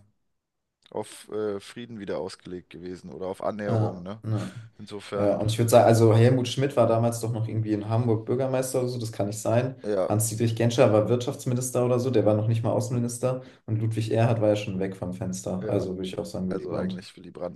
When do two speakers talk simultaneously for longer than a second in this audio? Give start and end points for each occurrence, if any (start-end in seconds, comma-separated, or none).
none